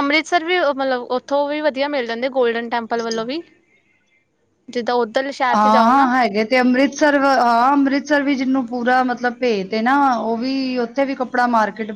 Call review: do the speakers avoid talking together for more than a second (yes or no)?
yes